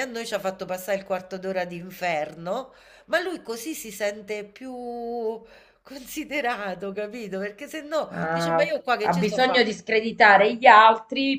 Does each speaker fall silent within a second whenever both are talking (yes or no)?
no